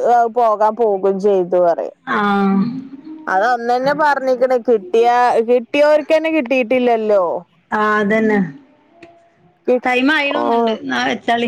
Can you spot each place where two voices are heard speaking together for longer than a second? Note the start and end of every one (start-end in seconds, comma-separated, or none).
none